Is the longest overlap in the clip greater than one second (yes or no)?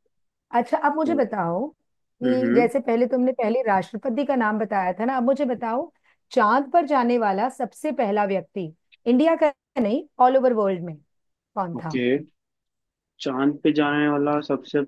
no